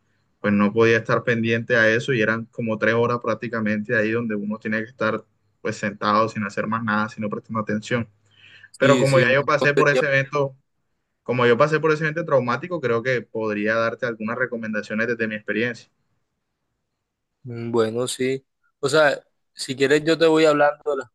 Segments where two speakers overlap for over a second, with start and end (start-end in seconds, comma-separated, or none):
8.8-10.3